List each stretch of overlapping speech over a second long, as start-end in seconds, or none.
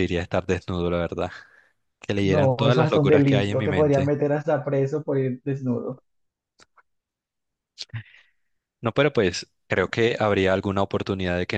2.2-4.1